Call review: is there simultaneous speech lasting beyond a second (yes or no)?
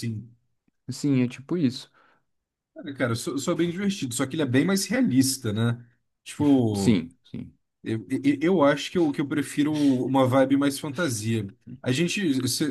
no